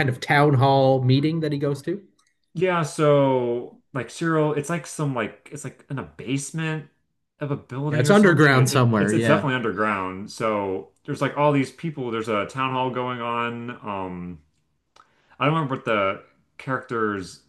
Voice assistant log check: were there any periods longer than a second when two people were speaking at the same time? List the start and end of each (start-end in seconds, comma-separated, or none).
7.9-9.4